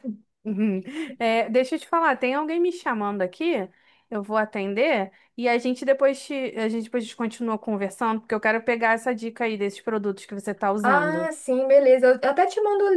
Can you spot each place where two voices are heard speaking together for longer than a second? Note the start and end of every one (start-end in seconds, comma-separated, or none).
none